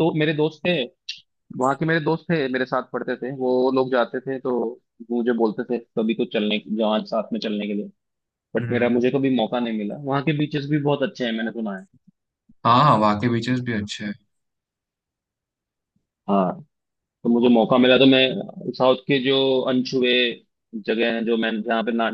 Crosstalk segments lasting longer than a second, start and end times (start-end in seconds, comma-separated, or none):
none